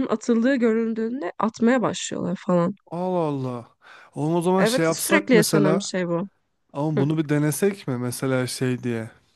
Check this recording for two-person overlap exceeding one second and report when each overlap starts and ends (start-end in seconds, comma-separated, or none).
4.6-5.9